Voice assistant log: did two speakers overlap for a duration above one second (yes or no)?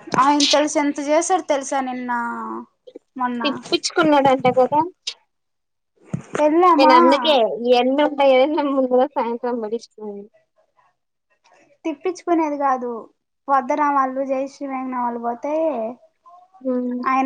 no